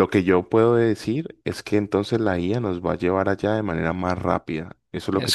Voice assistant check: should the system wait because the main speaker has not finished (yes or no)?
no